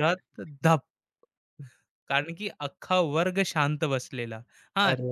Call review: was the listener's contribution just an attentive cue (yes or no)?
yes